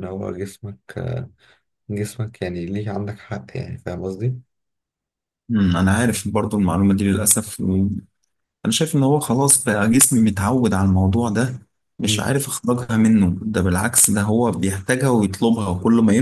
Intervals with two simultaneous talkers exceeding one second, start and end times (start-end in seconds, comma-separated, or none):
none